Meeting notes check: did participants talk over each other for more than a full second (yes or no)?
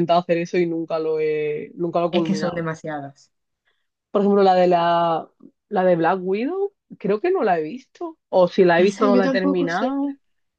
yes